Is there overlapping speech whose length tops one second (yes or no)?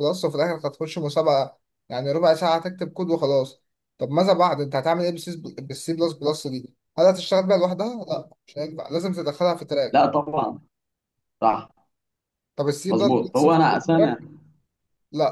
yes